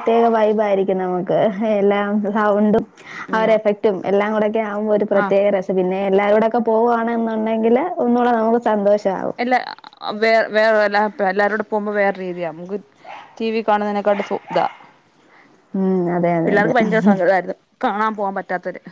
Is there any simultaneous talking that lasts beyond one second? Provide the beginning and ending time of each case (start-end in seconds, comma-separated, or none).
none